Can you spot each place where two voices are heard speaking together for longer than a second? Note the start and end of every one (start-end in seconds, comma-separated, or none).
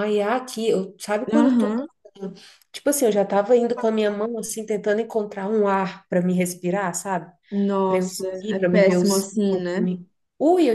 7.8-9.9